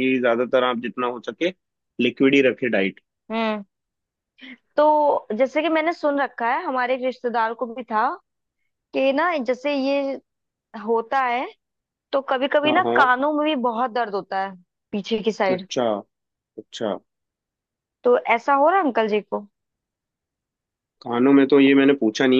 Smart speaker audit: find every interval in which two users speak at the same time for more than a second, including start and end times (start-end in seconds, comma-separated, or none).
none